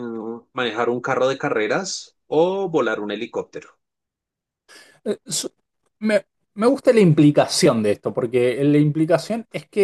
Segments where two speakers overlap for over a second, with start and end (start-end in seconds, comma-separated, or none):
none